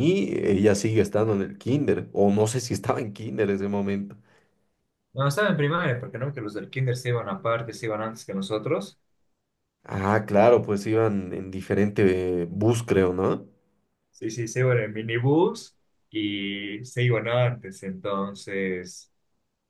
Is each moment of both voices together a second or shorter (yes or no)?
yes